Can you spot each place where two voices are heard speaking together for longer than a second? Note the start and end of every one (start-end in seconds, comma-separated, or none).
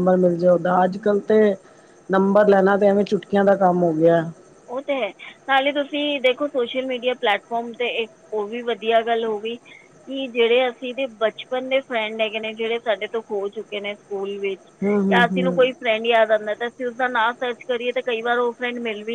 none